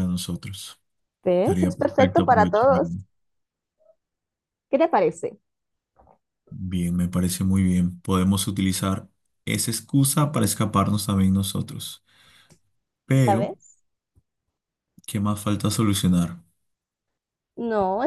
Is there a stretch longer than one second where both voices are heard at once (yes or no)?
yes